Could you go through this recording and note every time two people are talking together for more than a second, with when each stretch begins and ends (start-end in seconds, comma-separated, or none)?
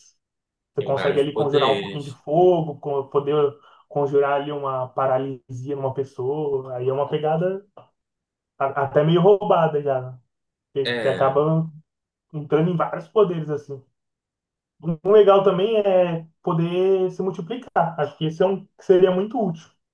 0.8-2.2